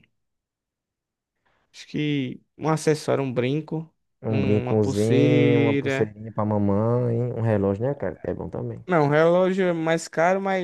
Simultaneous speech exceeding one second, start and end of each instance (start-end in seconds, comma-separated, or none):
4.3-6.1